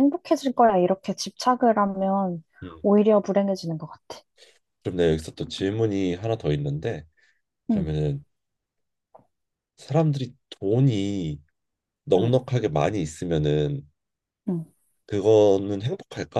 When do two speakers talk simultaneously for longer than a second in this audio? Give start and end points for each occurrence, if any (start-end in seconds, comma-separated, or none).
none